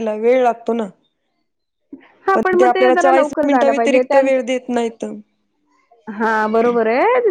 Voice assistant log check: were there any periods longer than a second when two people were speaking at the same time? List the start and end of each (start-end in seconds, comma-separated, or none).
2.3-4.4